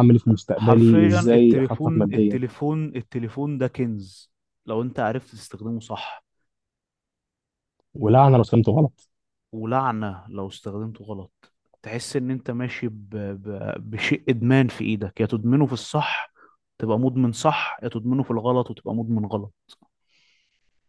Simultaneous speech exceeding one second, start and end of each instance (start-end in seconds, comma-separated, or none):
0.5-2.4